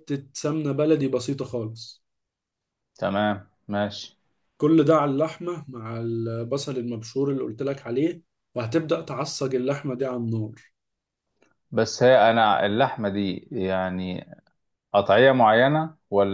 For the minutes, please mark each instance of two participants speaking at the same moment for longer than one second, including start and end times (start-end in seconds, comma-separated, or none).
none